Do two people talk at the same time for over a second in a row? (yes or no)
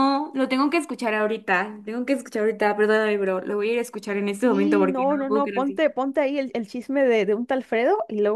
yes